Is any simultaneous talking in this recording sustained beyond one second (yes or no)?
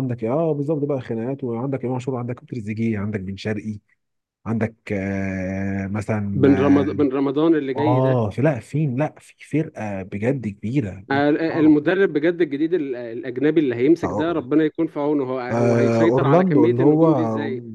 yes